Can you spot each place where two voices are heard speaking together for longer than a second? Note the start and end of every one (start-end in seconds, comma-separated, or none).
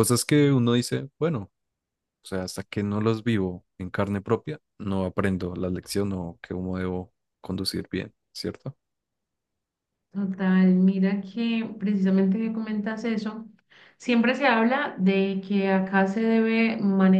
none